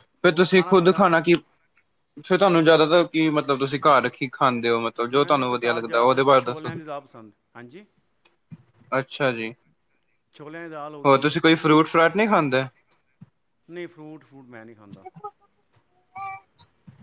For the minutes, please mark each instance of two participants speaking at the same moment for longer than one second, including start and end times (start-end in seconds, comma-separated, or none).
5.2-6.7